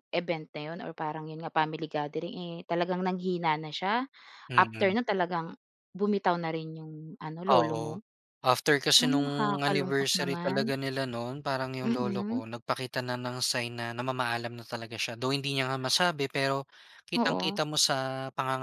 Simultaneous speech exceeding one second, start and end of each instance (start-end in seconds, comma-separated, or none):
9.0-10.7